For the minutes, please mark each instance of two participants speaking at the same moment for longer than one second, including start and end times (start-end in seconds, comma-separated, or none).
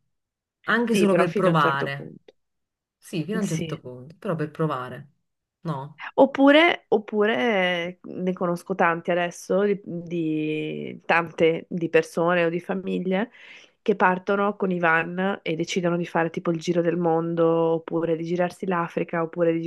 0.9-2.1